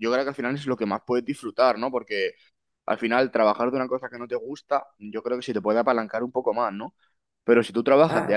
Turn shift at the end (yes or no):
no